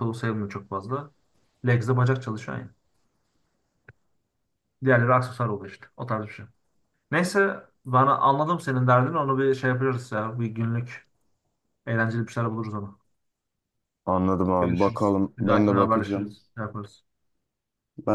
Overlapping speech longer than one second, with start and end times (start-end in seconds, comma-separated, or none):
14.6-16.3